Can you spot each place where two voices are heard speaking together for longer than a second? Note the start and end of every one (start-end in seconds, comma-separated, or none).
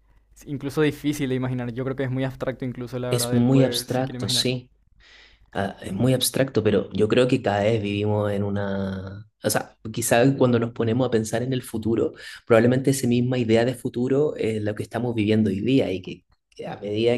3.1-4.5